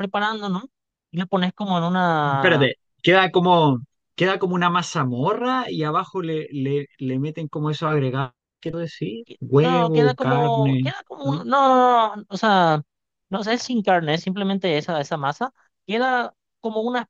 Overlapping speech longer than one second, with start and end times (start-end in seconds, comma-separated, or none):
9.6-11.5